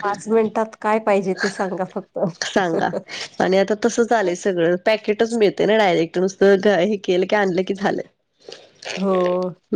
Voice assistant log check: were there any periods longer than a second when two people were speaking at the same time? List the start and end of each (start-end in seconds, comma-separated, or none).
none